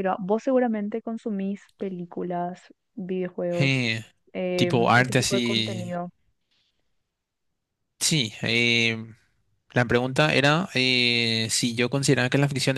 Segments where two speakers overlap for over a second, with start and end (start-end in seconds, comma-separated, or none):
4.5-5.9